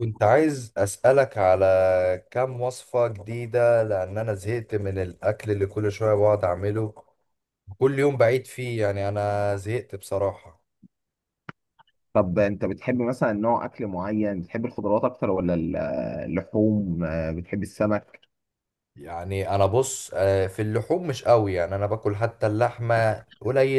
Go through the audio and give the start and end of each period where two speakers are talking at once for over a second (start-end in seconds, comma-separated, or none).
none